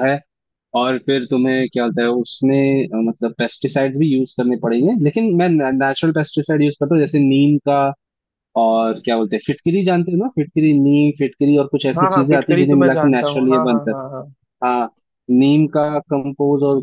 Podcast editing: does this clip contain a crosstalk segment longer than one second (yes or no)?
yes